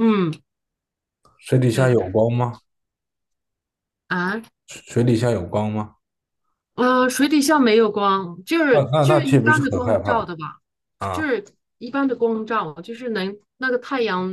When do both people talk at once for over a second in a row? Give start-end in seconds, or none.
8.7-10.3